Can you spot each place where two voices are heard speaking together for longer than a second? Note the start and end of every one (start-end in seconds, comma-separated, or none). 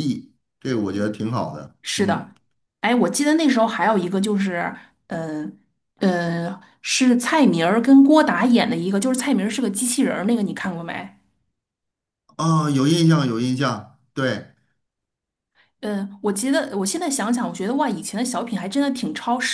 none